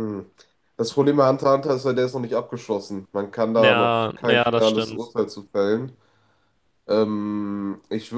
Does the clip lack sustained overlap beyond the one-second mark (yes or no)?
no